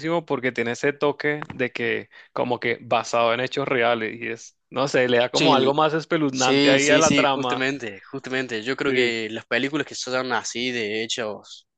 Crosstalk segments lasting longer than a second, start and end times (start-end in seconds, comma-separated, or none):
6.3-7.7